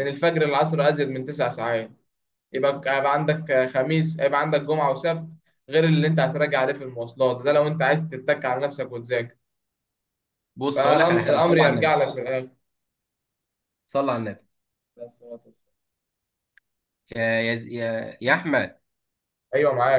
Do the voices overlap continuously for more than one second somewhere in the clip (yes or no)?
yes